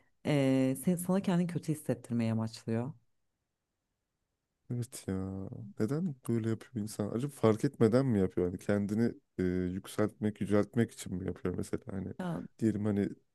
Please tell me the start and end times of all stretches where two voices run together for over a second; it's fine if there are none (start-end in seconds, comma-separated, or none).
none